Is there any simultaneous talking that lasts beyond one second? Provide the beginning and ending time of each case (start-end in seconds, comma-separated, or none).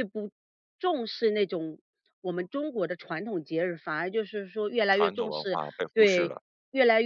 4.9-6.3